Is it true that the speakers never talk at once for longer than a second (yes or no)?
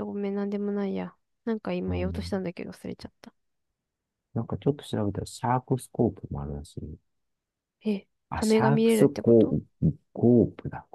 no